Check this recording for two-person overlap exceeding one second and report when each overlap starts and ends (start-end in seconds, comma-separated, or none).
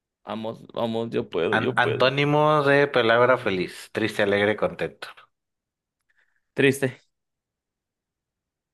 none